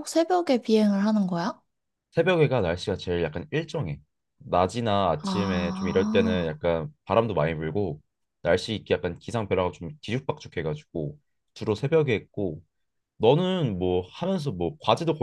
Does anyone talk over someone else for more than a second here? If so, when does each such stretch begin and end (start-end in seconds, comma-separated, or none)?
5.2-6.5